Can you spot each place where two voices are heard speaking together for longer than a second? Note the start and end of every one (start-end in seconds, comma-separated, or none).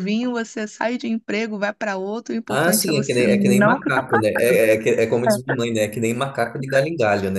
2.5-4.6